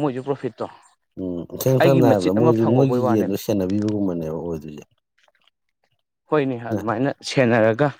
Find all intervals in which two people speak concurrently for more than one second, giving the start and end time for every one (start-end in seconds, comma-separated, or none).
1.8-3.4